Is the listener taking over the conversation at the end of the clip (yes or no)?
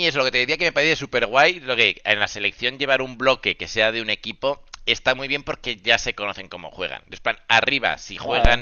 no